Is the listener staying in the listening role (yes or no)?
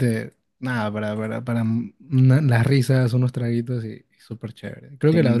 no